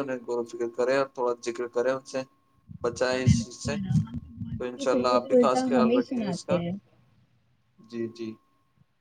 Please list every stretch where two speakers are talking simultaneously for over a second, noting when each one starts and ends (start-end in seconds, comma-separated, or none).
4.5-6.6